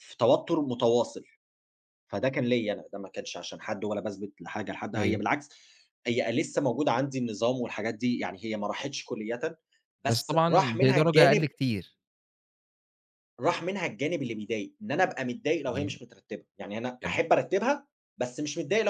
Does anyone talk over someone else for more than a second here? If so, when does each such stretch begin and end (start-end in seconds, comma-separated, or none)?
10.1-11.5